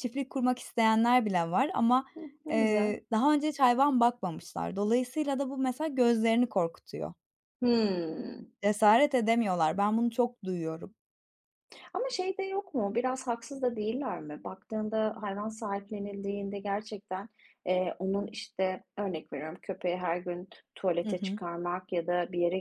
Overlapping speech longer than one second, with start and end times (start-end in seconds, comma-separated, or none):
none